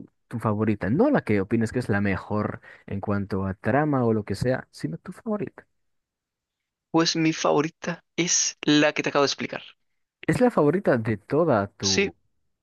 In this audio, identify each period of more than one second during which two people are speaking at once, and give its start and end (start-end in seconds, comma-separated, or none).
none